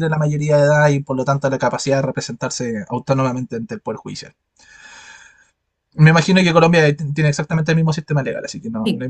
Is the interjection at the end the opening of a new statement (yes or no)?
yes